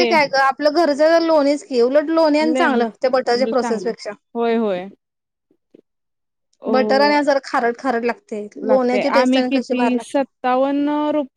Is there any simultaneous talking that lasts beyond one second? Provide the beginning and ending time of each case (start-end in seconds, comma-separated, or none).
2.5-3.9